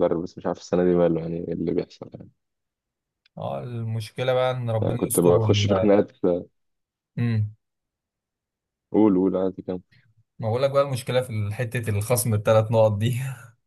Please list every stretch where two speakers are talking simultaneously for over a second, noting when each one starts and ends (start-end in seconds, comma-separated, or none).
none